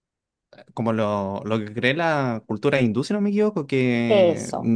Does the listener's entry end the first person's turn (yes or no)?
no